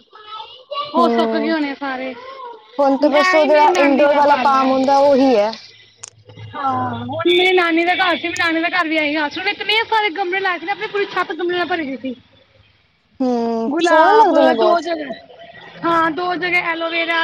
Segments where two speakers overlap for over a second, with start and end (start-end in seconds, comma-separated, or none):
3.2-4.7